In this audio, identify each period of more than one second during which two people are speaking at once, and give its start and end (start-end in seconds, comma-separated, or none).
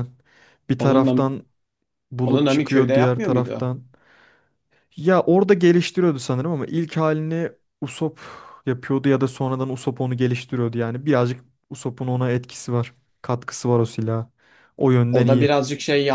2.2-3.8